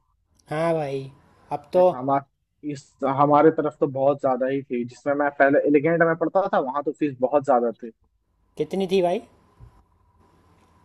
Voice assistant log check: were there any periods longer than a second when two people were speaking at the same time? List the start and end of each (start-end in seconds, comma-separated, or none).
none